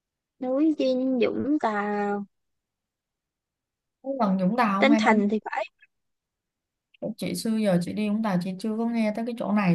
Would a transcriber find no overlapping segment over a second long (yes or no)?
yes